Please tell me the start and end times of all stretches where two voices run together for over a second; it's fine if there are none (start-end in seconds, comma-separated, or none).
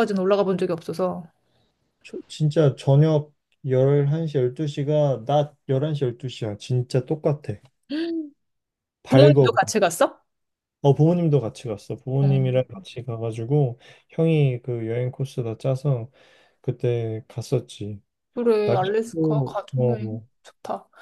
18.6-20.3